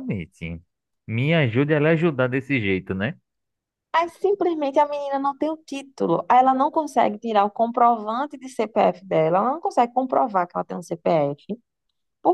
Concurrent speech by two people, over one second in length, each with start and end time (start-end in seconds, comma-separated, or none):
none